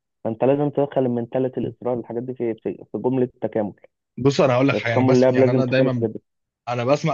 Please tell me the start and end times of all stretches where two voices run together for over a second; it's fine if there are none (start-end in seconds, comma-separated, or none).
4.7-6.1